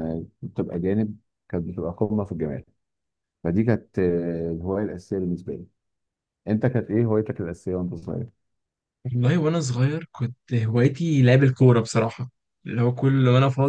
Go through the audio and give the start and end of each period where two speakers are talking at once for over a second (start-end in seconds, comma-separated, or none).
none